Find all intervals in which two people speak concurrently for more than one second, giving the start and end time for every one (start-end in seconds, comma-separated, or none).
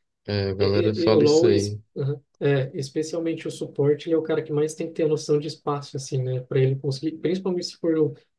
0.6-1.8